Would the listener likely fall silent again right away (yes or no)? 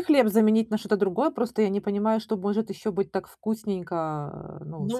no